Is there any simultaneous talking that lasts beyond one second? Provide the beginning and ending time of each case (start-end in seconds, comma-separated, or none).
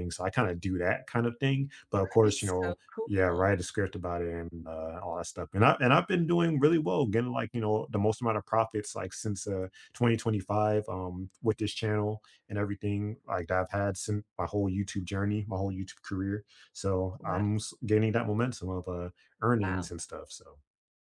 2.0-3.5